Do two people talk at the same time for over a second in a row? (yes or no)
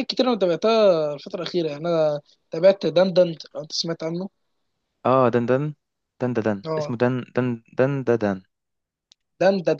no